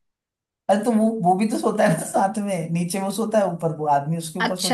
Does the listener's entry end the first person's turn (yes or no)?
yes